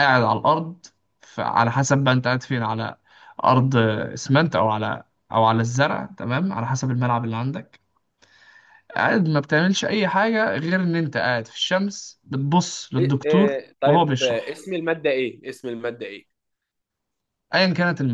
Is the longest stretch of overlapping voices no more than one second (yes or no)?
no